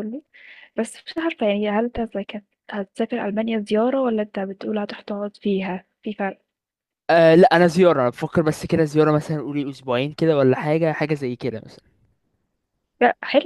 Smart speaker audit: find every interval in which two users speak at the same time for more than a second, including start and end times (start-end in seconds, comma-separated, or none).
none